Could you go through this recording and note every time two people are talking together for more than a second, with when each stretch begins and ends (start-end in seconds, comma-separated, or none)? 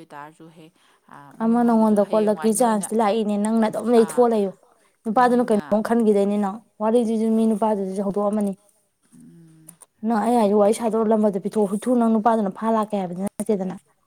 none